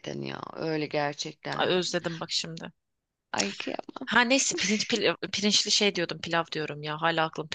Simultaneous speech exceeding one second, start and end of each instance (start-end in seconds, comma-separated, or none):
none